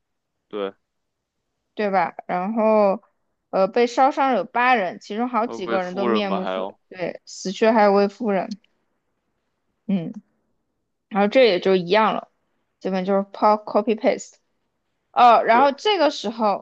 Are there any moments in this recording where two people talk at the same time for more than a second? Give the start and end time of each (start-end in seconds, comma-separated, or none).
5.5-6.8